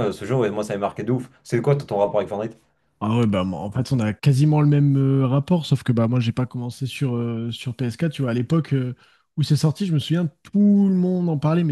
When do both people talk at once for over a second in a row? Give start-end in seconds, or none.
none